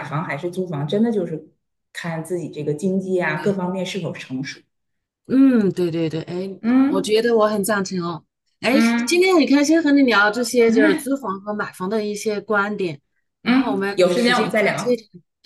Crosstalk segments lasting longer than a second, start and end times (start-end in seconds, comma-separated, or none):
13.4-15.0